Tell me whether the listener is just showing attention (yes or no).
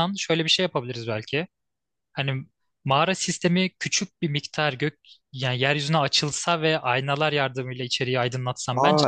no